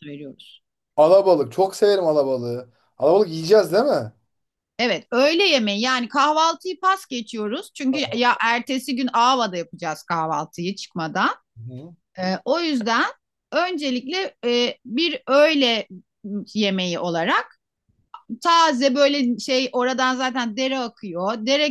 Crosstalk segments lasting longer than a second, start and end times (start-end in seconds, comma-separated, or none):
none